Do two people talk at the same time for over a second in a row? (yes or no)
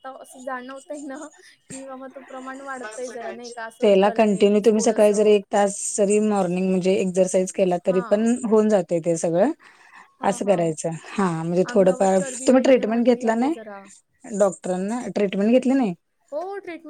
yes